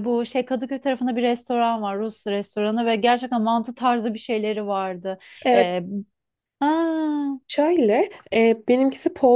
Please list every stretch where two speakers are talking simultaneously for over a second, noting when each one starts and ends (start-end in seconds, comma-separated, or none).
none